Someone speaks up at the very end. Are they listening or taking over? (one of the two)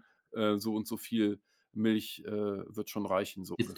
taking over